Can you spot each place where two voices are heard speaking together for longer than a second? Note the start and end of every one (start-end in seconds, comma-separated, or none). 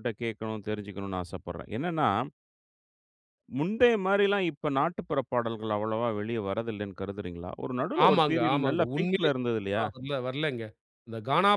8.1-9.8